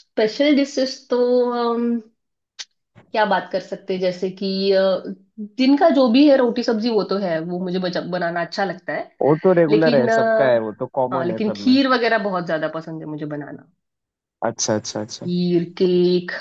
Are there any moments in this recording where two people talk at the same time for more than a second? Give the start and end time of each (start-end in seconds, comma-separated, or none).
9.7-11.8